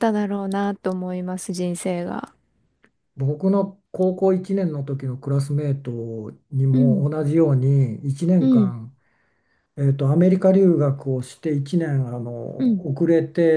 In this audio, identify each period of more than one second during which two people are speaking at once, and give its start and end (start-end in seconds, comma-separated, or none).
none